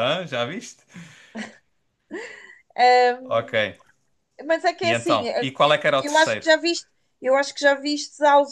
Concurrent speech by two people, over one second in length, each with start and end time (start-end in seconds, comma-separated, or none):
none